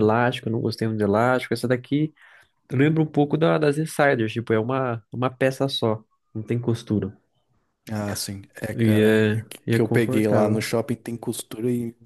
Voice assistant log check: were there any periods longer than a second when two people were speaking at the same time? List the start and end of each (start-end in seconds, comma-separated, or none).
8.8-10.7